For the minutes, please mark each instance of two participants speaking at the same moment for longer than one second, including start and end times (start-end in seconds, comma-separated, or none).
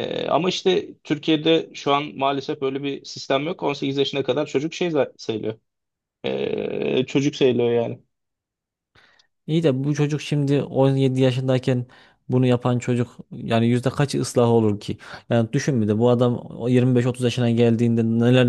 none